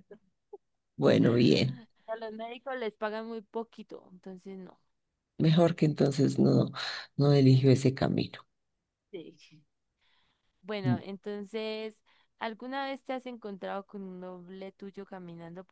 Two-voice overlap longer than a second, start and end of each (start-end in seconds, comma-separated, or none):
none